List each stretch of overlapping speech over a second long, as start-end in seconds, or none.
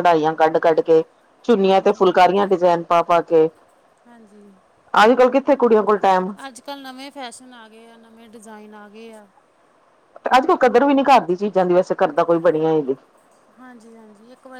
none